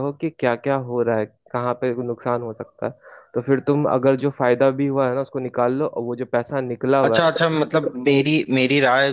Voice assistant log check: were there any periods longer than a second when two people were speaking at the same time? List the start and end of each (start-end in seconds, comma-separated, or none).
none